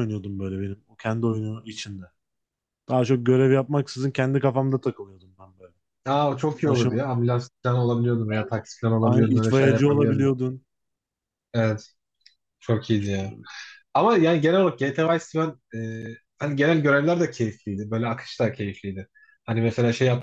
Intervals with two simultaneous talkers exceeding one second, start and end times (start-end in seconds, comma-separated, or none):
9.0-10.3